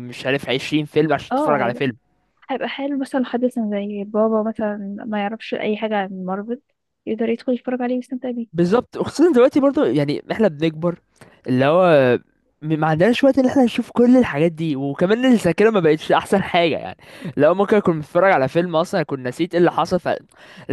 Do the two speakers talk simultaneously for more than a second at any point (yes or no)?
no